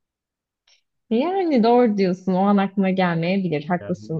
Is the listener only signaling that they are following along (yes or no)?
yes